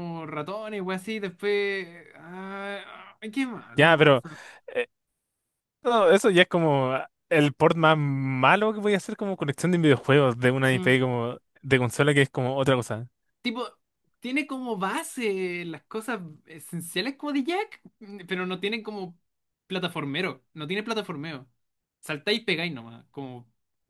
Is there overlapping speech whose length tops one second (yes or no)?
no